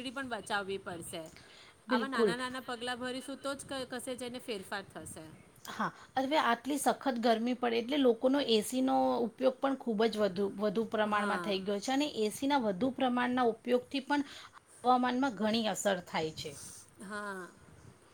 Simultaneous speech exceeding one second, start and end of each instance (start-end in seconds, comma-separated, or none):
none